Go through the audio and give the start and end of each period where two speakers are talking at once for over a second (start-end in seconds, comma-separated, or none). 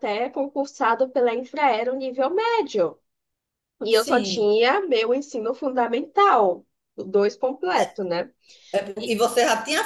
none